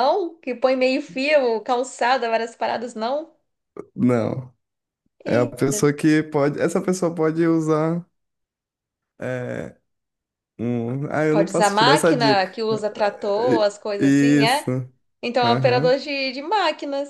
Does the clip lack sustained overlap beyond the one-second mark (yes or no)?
no